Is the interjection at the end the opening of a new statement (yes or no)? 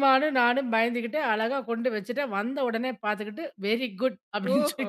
yes